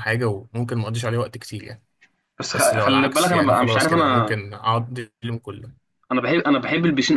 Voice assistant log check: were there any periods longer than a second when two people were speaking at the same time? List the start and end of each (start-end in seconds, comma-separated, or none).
2.5-4.4